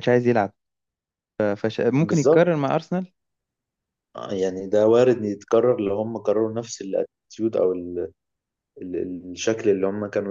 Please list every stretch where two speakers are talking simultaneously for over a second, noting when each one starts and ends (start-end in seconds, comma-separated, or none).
none